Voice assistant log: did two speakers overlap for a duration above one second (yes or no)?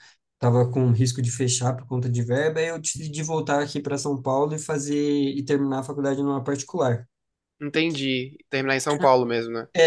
no